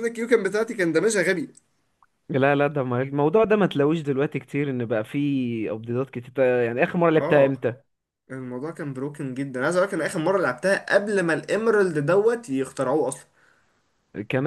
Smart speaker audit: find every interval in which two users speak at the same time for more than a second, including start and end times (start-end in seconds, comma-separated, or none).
none